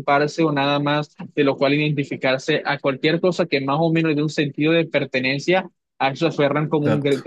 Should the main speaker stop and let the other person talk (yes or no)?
no